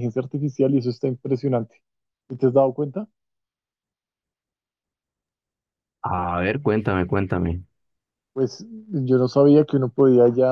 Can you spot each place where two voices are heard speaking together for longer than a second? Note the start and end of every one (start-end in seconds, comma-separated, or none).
none